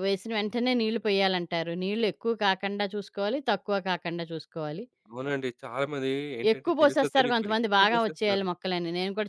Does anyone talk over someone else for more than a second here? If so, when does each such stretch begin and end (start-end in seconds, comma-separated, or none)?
6.5-8.5